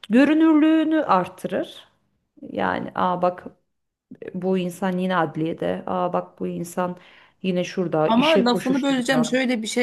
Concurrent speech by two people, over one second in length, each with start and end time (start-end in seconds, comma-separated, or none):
8.0-9.3